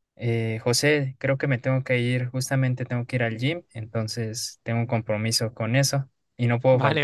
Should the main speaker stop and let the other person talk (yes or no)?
yes